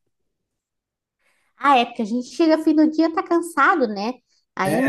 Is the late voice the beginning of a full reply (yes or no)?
no